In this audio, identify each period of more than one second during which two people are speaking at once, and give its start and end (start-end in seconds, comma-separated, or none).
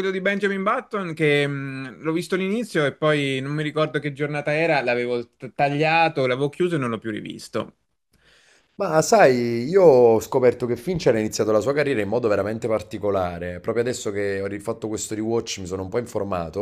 none